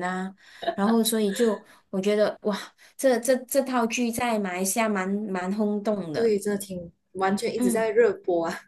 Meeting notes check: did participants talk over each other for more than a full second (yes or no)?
no